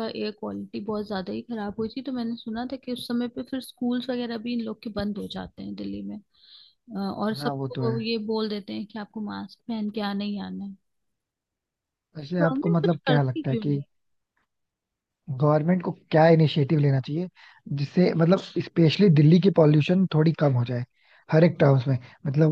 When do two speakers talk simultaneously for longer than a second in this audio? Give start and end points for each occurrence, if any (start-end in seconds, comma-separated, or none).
12.4-13.8